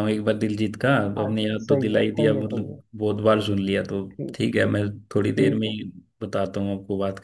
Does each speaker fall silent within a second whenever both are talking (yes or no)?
no